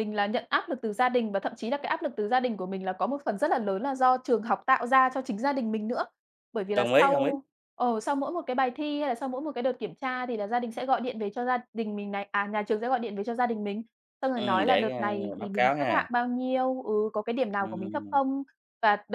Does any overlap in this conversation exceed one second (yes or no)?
yes